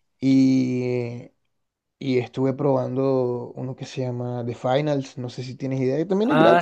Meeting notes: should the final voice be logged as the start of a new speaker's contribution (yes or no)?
yes